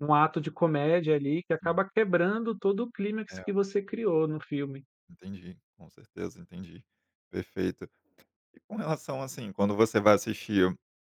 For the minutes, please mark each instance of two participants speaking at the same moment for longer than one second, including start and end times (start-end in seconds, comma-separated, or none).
none